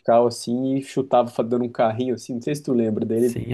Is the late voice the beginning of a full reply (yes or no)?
yes